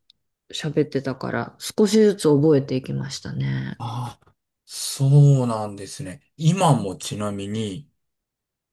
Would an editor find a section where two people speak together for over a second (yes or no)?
no